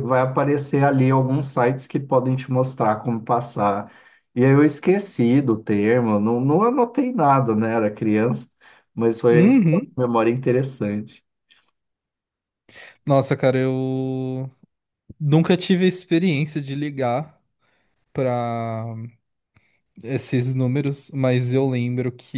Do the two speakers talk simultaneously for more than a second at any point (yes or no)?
no